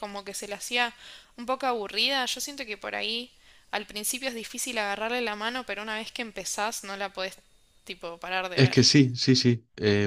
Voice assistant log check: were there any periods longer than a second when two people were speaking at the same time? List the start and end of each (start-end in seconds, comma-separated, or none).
none